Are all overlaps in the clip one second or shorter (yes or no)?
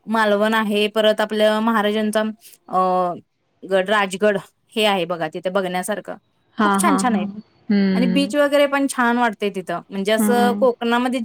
yes